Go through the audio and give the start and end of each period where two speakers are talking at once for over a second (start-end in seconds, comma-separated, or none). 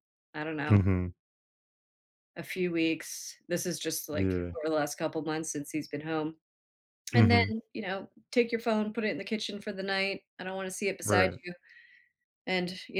none